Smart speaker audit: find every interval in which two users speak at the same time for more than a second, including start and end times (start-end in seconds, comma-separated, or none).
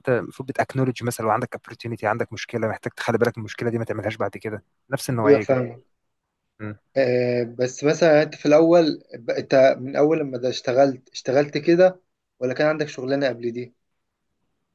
none